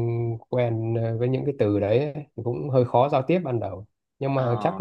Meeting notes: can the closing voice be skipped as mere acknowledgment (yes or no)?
yes